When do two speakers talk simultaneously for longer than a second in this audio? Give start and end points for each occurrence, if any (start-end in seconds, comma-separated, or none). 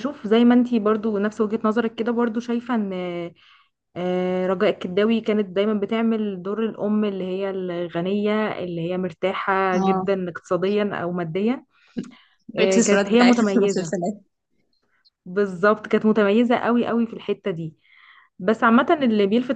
12.6-13.9